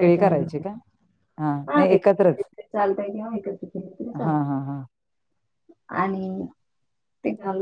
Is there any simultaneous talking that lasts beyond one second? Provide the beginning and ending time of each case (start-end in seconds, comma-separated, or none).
none